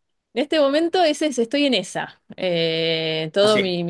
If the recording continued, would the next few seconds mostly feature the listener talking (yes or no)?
yes